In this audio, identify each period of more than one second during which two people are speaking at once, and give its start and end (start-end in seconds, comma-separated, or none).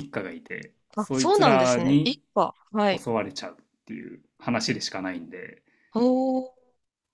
1.0-2.2